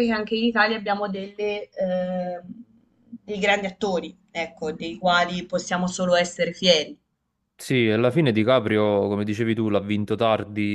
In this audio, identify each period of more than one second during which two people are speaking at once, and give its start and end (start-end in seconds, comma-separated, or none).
none